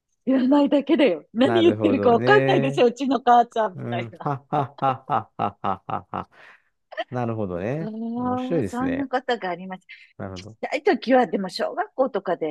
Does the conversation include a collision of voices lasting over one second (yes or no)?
yes